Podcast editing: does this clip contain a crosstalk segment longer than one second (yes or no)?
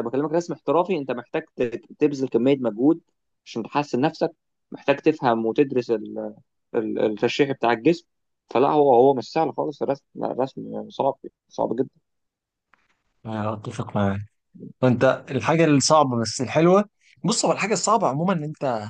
no